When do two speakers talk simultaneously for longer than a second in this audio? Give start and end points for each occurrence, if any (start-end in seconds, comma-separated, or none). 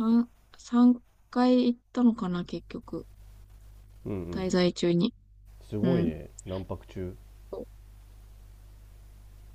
none